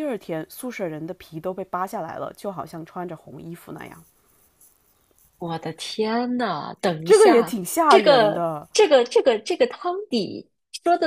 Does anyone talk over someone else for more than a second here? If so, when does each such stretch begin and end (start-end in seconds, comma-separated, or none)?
7.0-8.7